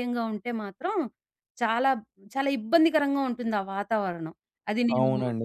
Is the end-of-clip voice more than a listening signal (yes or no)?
yes